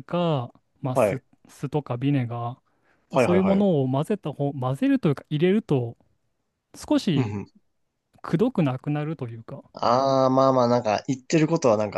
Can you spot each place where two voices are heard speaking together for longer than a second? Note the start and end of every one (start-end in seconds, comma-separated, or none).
none